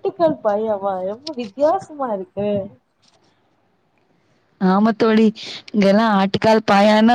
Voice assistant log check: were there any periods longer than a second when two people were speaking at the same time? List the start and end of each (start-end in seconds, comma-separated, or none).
none